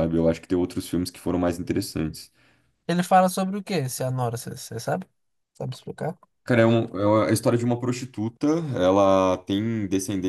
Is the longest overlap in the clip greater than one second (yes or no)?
no